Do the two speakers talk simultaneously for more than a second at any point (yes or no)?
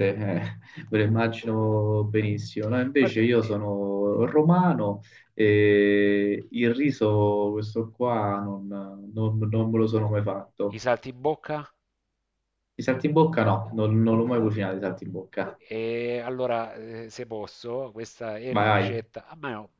no